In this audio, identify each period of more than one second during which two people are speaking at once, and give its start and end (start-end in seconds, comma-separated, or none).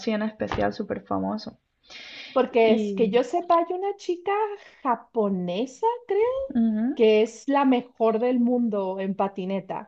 none